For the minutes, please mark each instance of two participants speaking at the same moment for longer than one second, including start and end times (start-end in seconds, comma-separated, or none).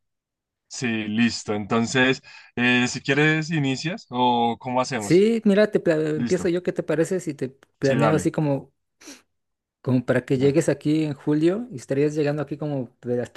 none